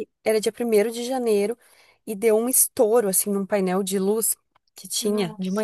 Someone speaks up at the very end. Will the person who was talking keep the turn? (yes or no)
yes